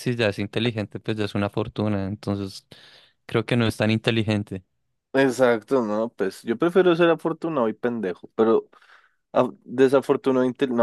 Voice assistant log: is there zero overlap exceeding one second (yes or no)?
yes